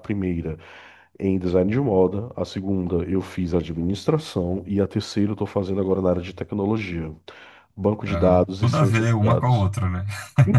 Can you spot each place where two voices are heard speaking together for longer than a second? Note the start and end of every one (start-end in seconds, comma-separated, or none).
8.1-9.7